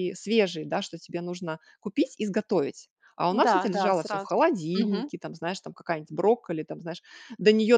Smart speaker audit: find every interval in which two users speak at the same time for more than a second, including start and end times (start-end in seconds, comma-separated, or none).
3.3-5.1